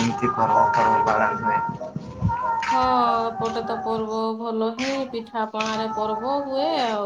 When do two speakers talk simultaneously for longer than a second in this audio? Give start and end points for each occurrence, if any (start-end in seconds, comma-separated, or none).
none